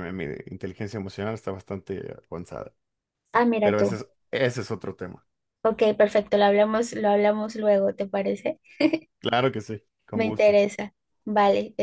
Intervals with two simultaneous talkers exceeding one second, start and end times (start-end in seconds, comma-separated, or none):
none